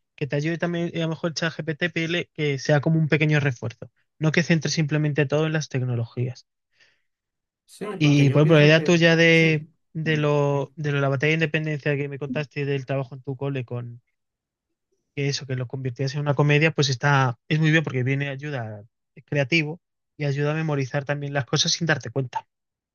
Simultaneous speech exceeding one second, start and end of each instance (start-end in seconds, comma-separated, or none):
8.0-9.7